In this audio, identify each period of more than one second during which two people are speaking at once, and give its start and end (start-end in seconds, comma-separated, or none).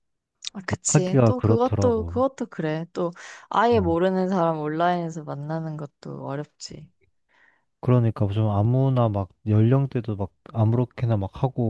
0.9-2.2